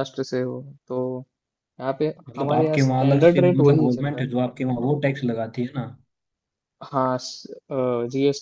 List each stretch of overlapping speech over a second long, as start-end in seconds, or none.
2.3-4.3